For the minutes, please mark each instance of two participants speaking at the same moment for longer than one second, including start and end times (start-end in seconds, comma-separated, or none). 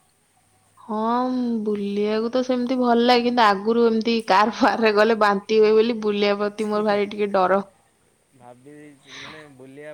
none